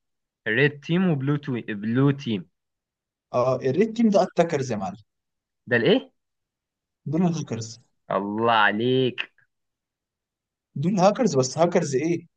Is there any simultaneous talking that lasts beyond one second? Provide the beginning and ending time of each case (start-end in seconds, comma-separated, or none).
none